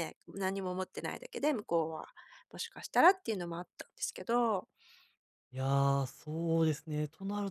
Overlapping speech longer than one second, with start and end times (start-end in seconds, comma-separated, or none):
none